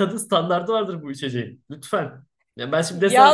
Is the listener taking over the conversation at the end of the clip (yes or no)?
no